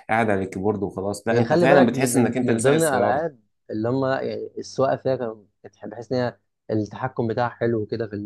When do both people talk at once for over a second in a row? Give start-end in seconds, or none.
1.3-3.2